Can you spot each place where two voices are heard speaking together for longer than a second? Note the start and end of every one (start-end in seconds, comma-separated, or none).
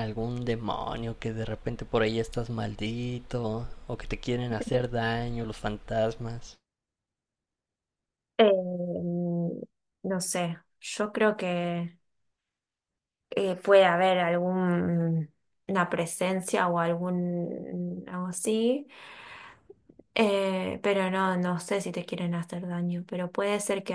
none